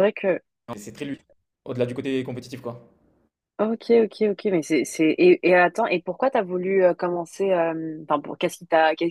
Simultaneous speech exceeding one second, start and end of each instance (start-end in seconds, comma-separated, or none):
none